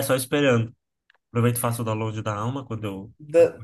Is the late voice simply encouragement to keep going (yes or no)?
no